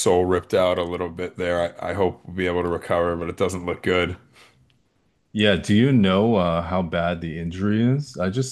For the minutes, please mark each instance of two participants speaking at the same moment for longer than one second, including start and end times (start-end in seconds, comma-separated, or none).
none